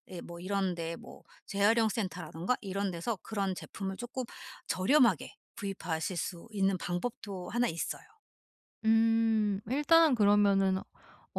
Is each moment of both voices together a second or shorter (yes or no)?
yes